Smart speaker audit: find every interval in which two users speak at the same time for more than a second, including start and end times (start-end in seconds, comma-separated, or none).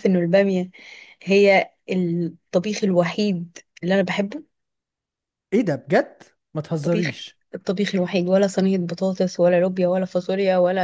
none